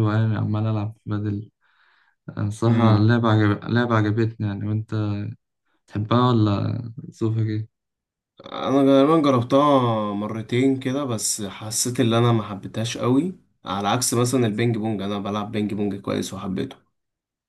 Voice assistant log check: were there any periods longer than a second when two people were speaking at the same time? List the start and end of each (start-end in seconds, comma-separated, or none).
none